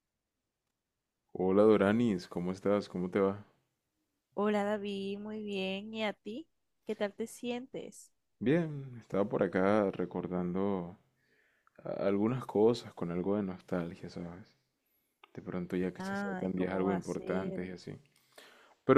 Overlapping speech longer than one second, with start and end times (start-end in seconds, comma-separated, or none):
16.0-17.6